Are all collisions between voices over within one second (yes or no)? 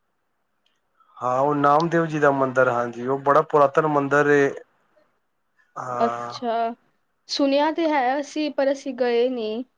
yes